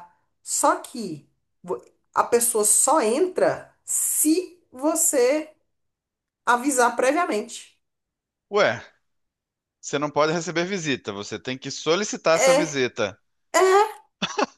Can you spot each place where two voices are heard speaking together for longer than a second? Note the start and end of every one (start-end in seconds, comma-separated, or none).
none